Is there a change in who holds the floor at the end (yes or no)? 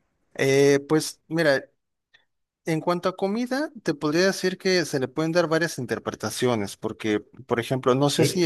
no